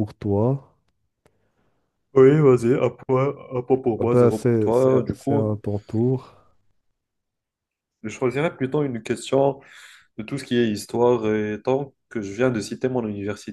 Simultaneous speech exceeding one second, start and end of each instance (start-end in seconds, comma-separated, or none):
4.0-5.5